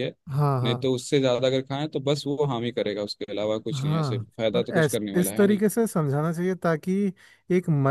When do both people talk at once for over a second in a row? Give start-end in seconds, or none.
3.7-5.6